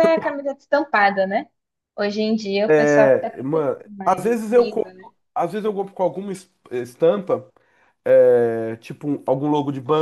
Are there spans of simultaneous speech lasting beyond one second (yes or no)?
yes